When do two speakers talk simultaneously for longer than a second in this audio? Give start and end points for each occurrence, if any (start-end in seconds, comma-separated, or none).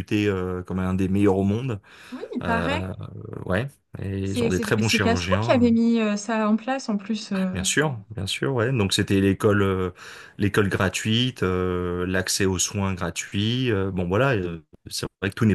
4.2-5.7